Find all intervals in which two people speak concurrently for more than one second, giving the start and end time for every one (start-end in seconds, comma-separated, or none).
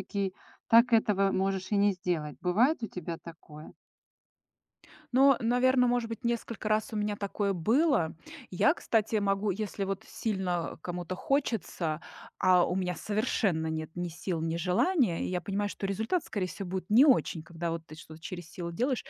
none